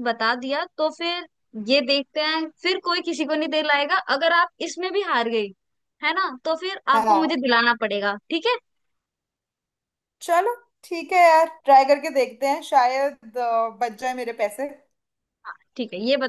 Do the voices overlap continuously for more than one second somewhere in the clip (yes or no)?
no